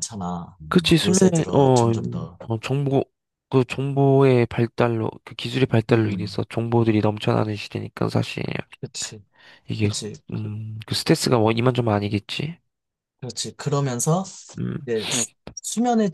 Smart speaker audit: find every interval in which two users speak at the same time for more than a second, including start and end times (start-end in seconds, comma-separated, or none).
0.7-2.4